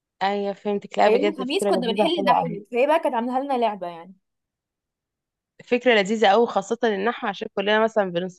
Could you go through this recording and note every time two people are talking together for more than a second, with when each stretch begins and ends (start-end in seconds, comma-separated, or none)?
1.1-2.6